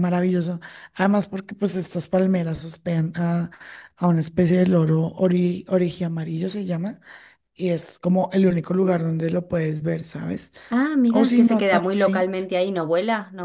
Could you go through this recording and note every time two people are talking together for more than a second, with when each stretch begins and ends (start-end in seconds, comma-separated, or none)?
11.1-12.3